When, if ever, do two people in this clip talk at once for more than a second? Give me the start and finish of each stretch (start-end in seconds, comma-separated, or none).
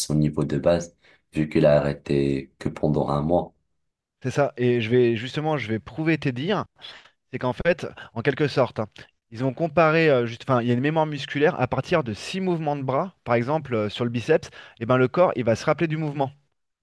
none